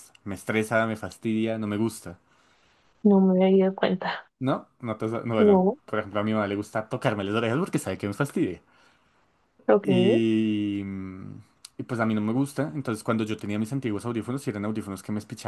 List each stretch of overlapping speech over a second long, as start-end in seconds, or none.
none